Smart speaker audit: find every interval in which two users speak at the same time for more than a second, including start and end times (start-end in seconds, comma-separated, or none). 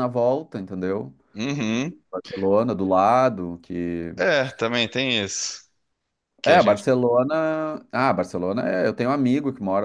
none